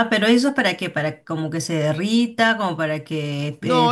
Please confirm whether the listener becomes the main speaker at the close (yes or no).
yes